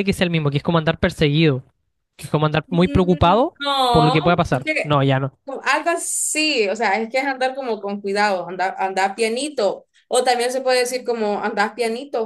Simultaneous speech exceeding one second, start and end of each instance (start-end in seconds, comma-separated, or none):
2.7-5.0